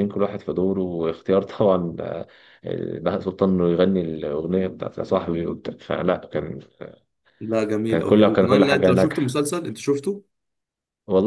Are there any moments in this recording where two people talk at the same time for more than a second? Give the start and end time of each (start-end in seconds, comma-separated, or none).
7.9-9.4